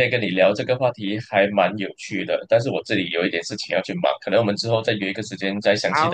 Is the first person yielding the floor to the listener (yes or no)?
yes